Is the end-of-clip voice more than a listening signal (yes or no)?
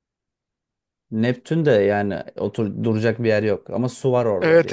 yes